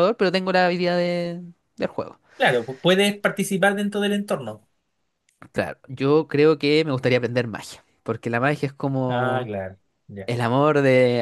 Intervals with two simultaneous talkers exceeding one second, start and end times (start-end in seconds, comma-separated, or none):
none